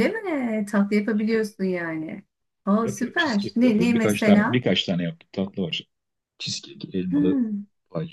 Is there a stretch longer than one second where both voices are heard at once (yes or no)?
yes